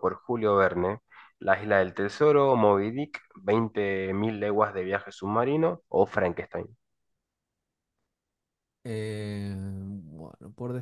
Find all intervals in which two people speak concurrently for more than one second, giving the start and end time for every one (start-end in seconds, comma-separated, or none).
none